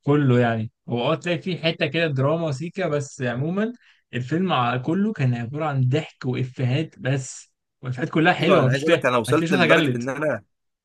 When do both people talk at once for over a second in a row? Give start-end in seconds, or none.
8.3-10.0